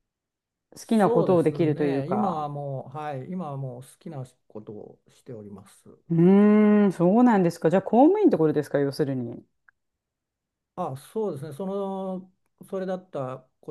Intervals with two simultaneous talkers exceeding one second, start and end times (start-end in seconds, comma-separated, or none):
0.8-2.5